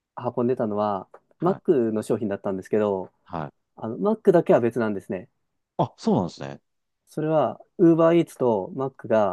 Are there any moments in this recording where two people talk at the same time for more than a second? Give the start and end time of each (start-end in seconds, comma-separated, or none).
none